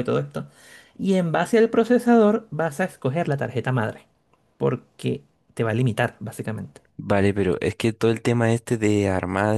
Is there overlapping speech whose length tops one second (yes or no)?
no